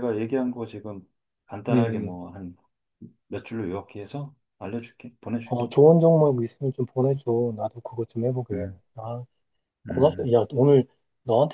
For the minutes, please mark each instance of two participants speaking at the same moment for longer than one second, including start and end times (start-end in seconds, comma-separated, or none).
none